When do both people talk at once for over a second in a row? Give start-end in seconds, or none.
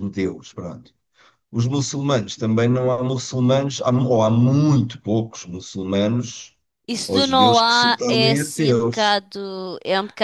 7.1-9.2